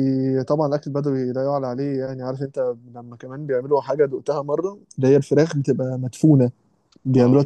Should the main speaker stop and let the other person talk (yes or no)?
yes